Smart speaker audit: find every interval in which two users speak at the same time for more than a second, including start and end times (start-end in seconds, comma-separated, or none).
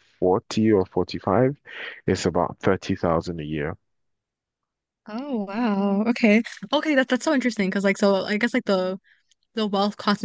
none